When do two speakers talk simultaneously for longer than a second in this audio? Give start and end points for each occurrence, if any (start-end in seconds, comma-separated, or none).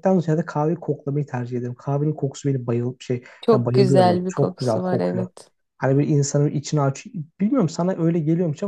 3.4-5.2